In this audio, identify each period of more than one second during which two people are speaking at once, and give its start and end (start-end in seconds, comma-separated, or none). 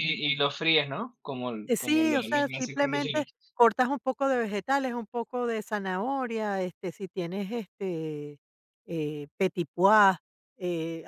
1.7-3.3